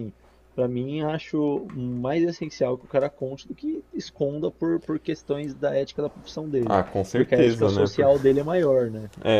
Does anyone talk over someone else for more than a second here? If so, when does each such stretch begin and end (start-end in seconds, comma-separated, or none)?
6.7-8.1